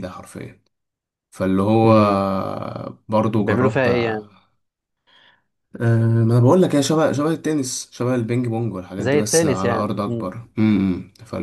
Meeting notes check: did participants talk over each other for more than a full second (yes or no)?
yes